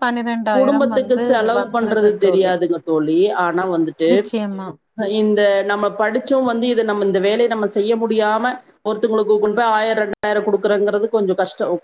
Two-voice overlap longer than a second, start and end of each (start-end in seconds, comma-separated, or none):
0.6-2.5